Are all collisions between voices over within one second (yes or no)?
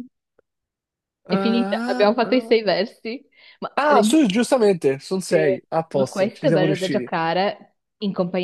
no